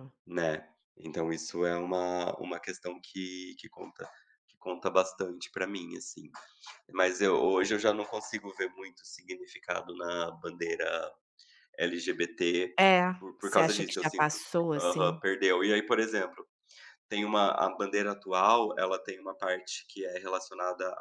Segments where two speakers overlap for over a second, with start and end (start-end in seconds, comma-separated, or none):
13.2-15.2